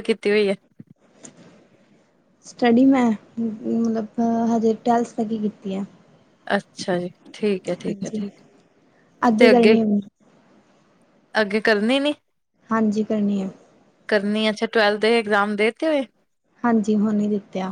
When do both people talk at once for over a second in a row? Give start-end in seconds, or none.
none